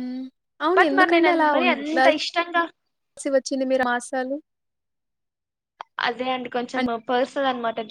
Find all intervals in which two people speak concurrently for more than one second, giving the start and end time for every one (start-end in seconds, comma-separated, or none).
0.8-2.6